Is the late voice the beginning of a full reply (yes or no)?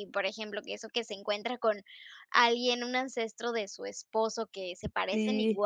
no